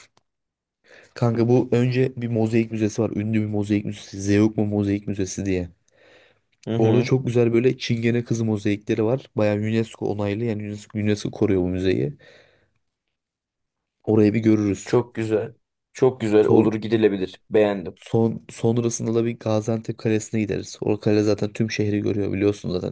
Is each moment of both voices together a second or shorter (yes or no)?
yes